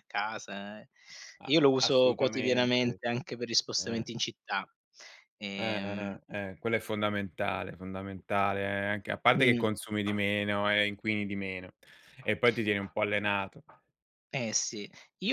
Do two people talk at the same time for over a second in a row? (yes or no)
yes